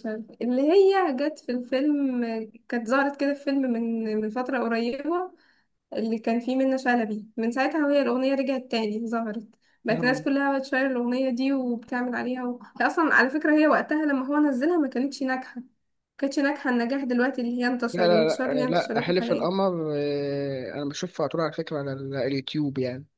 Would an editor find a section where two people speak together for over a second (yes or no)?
yes